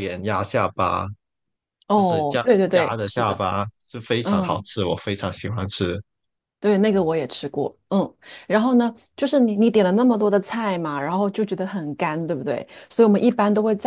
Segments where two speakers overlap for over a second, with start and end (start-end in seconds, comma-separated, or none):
2.0-3.4